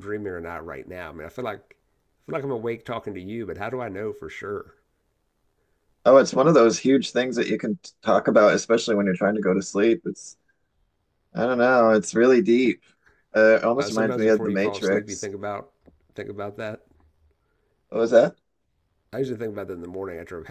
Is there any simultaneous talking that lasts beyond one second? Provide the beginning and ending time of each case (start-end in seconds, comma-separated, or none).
13.8-15.3